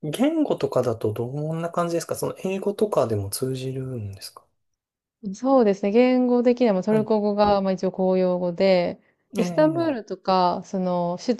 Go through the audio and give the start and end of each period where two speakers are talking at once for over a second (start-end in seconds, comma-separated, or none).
none